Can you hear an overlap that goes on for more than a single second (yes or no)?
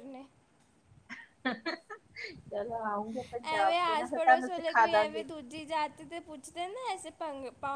no